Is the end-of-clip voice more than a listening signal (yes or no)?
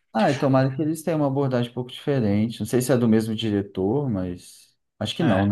yes